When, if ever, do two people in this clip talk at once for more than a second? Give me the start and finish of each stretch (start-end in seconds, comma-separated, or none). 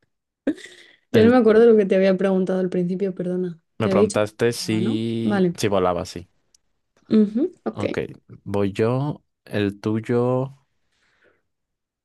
3.8-5.5